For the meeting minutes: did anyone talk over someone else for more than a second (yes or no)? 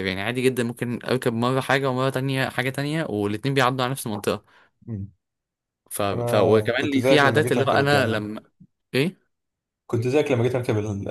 yes